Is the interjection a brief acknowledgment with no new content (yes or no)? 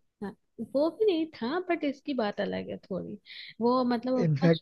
yes